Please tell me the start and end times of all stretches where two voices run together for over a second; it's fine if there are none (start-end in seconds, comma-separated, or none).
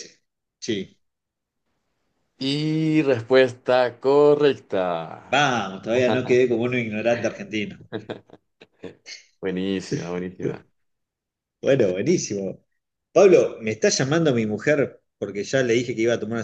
none